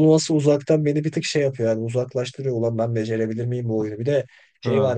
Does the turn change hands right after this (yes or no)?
no